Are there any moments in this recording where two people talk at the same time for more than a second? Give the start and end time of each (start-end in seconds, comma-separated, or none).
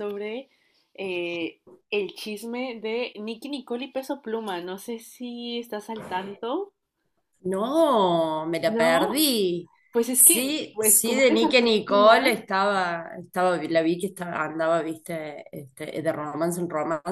10.1-12.2